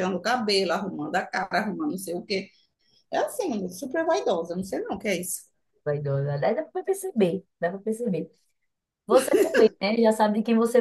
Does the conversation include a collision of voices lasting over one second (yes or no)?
no